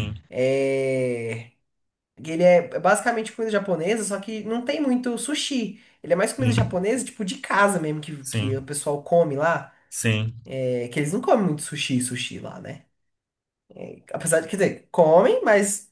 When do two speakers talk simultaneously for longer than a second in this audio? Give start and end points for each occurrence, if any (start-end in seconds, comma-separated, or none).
none